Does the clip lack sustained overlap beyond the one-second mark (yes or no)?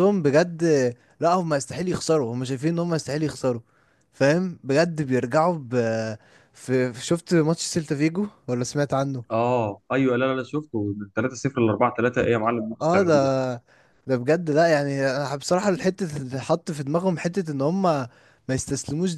yes